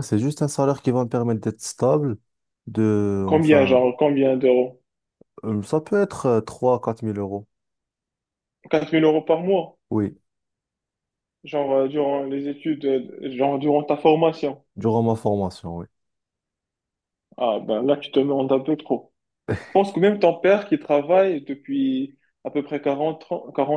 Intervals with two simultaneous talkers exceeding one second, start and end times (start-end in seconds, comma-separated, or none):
none